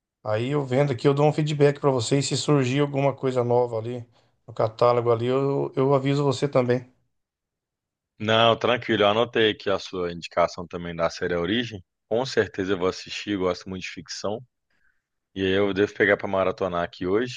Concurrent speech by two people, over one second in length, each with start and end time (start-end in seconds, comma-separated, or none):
none